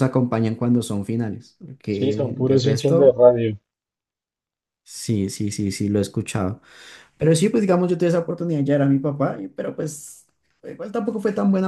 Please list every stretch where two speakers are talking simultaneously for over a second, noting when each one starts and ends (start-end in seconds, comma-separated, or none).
1.9-3.2